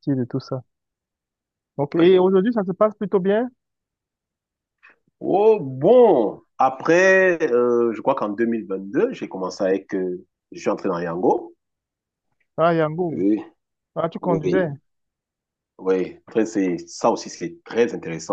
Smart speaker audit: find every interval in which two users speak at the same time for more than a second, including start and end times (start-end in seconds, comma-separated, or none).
none